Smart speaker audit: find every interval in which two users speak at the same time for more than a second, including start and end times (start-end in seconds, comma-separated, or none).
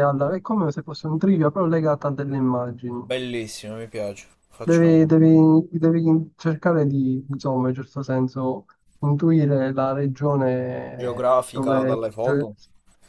11.0-12.4